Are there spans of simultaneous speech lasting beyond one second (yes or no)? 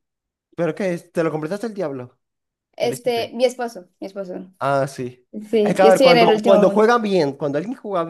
yes